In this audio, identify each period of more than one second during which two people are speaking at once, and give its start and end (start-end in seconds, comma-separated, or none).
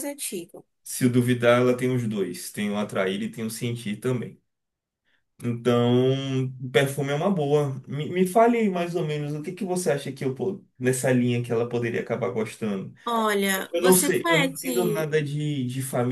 13.7-15.2